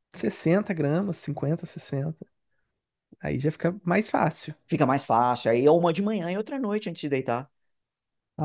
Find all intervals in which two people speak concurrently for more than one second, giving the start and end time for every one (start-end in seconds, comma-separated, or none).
none